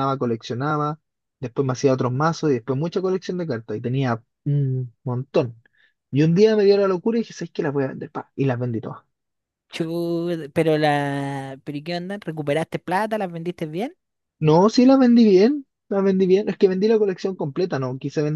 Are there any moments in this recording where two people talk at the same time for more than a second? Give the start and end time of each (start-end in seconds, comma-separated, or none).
none